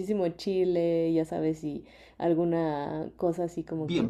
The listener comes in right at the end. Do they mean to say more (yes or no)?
no